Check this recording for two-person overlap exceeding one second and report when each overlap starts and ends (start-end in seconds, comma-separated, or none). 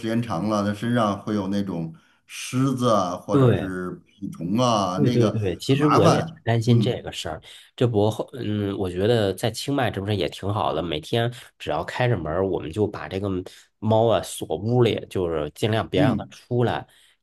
5.0-7.1